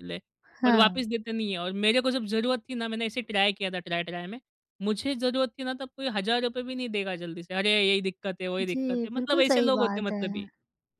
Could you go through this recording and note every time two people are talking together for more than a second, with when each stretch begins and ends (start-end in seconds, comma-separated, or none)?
8.7-10.5